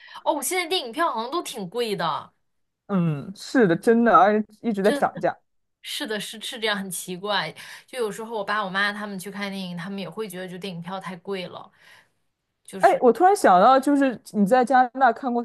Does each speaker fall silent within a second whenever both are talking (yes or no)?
yes